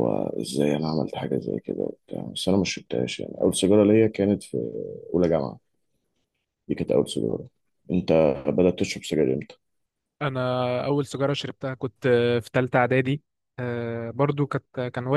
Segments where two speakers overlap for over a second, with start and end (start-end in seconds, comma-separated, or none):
none